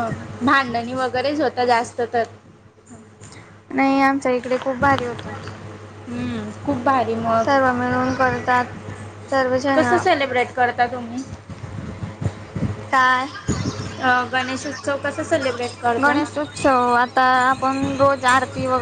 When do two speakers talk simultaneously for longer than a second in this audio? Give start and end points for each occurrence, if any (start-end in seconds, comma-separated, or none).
none